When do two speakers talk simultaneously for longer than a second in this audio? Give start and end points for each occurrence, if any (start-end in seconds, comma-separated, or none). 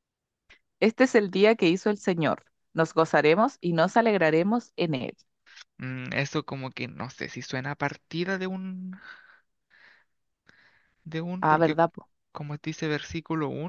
none